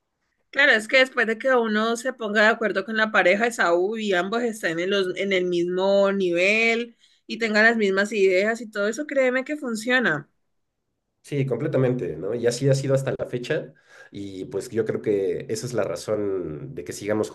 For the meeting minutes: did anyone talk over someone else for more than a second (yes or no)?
no